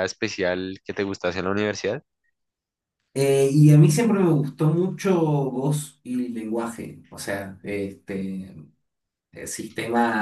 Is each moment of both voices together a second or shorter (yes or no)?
yes